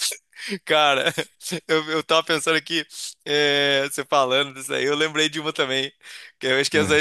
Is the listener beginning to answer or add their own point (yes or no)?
no